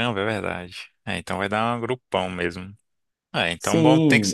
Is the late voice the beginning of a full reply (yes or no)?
yes